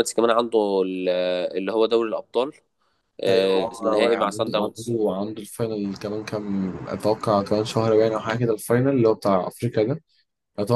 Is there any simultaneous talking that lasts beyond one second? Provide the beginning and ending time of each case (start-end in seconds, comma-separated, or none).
3.3-5.0